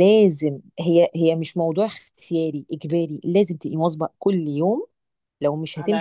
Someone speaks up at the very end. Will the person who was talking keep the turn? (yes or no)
yes